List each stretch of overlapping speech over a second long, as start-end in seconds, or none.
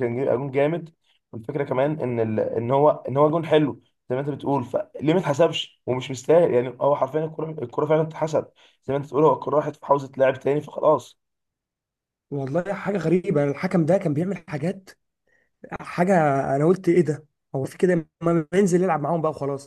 none